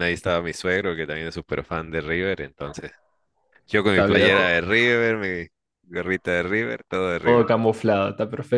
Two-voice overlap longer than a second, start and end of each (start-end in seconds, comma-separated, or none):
none